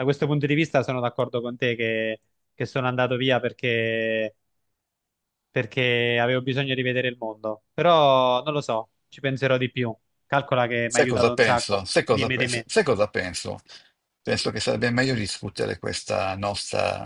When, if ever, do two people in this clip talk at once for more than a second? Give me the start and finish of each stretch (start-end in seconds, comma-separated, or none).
10.9-12.7